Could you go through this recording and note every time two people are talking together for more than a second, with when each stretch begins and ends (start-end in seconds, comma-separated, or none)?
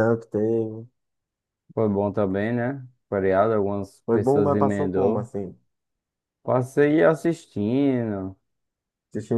4.0-5.3